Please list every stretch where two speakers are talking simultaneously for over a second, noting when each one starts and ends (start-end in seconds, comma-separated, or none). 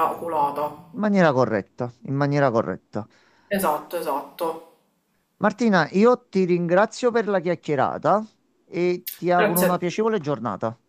none